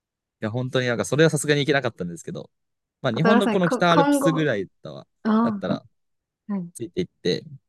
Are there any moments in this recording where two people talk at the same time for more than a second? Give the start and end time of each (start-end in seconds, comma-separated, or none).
3.1-4.5